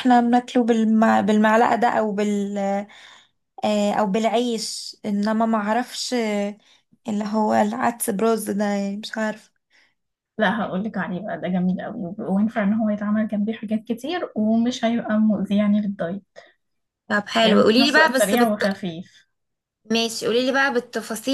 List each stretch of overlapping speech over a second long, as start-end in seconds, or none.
17.4-18.6